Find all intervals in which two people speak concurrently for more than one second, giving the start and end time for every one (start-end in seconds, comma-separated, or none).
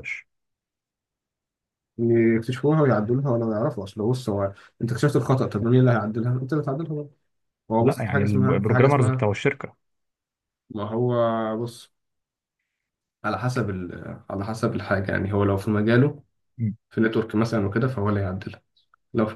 7.8-9.3